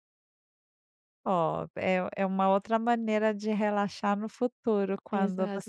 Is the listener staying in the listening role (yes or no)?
no